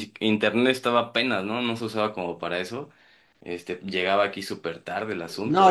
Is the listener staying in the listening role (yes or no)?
no